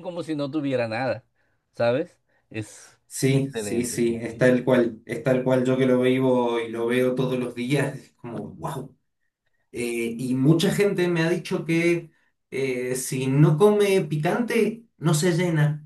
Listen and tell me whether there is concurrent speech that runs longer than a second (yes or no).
yes